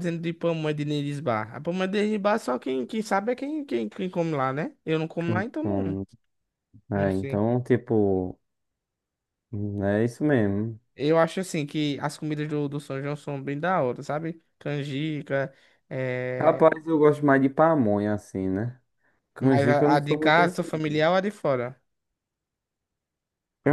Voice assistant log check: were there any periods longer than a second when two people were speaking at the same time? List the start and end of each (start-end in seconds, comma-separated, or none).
19.4-20.6